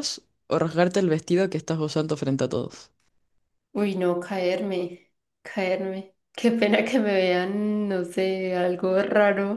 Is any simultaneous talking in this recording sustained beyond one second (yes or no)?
no